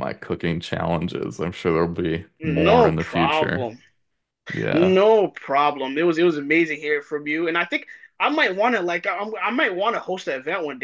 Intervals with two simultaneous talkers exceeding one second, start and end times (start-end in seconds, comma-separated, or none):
2.4-3.7